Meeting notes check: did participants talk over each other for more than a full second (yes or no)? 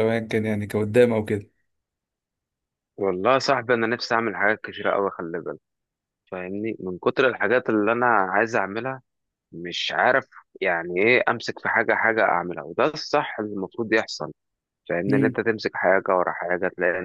no